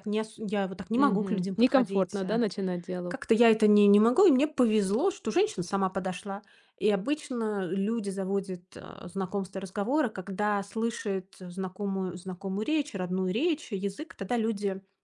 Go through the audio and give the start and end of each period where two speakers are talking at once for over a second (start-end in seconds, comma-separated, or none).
1.0-2.4